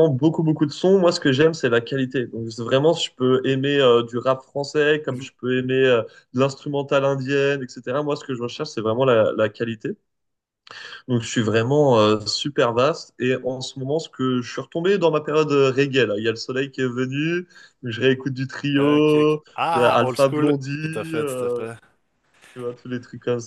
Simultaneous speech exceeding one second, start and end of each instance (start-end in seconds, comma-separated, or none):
18.8-21.6